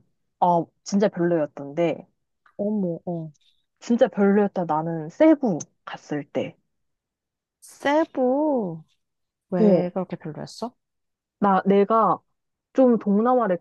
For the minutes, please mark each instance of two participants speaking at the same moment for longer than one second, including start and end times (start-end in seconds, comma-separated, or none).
none